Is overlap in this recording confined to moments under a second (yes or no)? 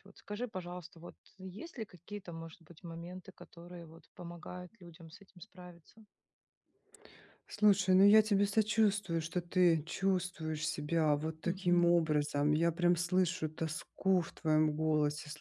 yes